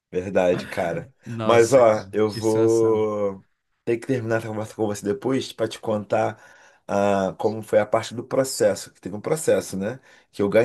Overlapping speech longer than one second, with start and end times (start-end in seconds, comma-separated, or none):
1.2-3.0